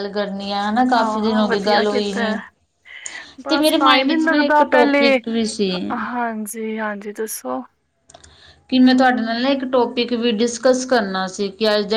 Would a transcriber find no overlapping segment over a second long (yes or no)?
no